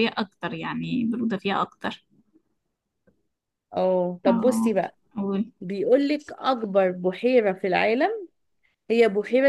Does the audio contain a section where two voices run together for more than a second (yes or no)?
no